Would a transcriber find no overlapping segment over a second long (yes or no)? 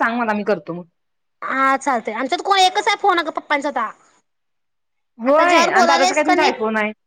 no